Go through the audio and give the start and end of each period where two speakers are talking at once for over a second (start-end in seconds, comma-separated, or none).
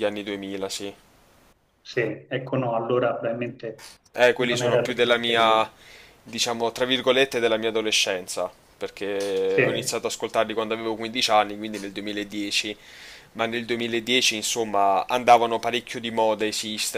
4.4-5.7